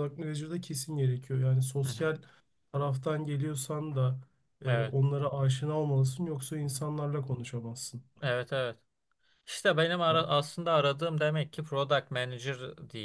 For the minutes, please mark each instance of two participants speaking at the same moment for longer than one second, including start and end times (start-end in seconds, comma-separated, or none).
none